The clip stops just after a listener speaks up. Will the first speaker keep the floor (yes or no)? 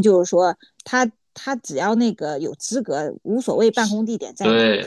no